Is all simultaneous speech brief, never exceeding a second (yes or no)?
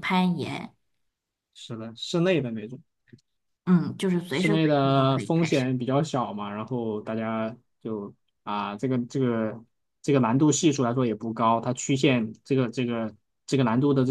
no